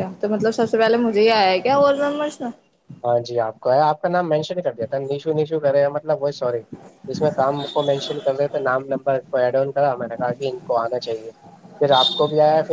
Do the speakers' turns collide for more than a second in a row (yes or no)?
no